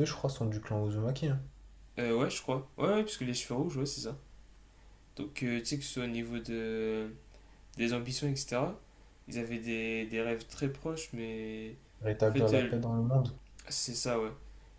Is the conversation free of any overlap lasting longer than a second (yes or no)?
yes